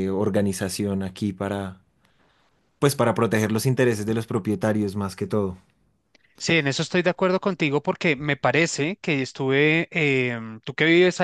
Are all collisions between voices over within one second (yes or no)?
yes